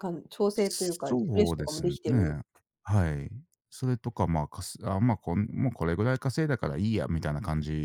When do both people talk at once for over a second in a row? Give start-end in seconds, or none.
0.5-2.3